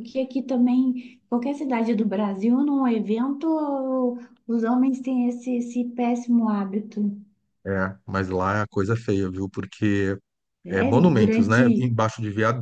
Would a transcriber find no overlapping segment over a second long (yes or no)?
no